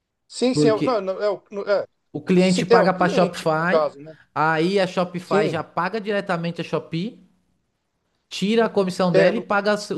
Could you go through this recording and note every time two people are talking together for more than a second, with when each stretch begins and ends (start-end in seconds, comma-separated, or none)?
2.4-3.8